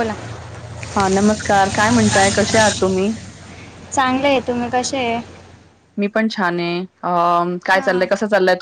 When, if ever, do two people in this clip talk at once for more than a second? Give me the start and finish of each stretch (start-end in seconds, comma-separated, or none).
none